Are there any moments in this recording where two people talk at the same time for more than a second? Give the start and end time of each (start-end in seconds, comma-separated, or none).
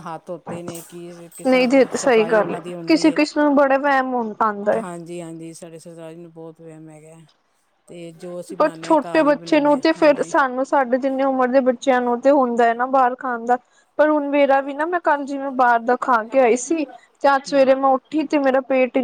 1.5-3.2, 8.6-10.3